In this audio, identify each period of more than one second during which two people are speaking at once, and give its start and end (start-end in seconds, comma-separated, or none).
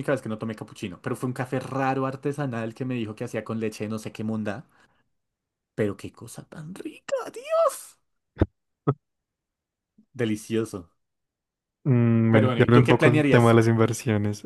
12.3-13.6